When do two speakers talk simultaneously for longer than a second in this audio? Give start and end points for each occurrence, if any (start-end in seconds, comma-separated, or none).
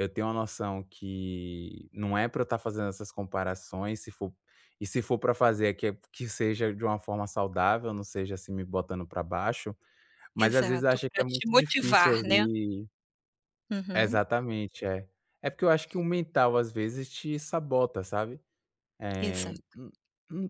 10.4-12.4